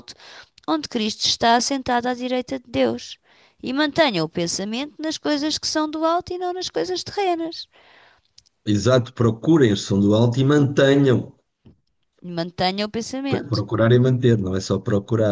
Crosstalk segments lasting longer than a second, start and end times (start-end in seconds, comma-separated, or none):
none